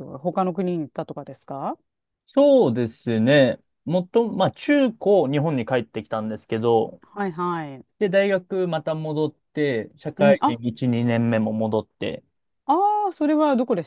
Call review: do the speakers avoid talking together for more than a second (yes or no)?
yes